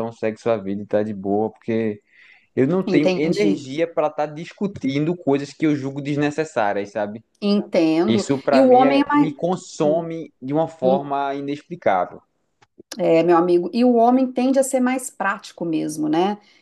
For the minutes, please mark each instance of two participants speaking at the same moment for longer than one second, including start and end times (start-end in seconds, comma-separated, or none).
8.1-9.4